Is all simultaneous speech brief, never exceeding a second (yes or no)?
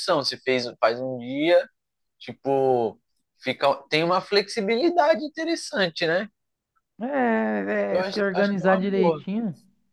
no